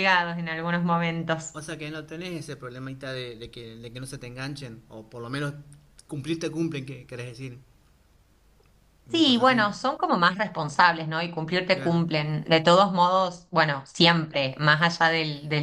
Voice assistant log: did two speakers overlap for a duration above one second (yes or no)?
no